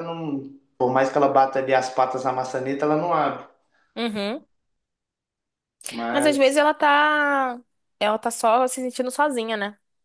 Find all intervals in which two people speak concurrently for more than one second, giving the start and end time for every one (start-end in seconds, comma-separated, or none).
none